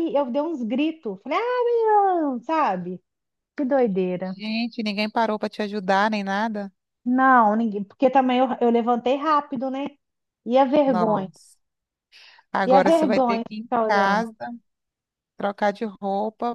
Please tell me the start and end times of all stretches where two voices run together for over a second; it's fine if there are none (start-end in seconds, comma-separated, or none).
12.7-14.3